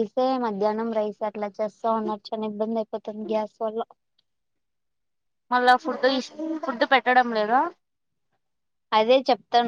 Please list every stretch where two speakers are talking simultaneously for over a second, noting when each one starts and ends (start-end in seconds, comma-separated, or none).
none